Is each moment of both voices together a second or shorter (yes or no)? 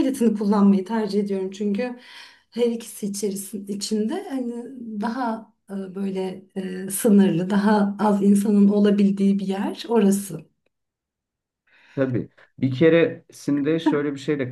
yes